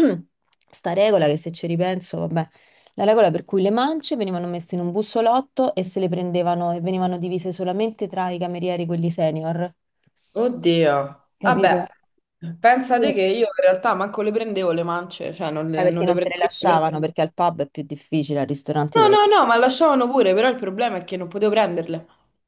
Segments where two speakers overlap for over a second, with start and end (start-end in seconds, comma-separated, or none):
15.7-17.1